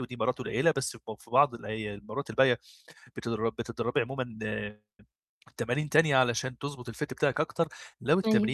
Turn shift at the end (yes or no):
no